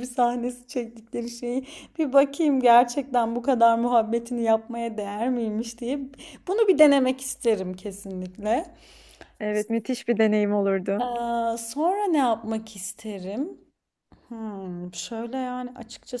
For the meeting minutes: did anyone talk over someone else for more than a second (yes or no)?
no